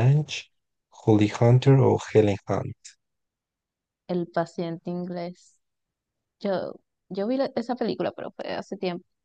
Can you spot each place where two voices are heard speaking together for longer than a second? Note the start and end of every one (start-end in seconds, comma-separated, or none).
none